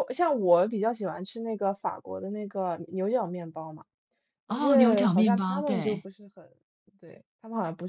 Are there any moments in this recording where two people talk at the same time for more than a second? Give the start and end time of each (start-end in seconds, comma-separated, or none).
4.5-6.0